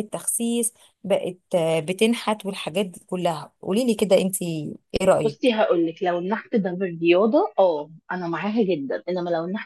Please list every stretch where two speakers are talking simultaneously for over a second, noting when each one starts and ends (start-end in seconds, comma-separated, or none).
none